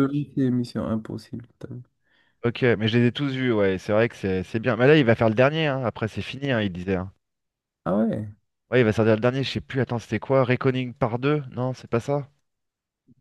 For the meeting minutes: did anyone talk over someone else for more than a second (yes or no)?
no